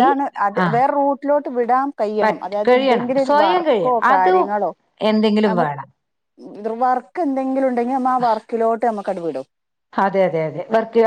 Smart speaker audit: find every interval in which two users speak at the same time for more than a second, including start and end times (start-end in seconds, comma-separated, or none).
2.2-4.5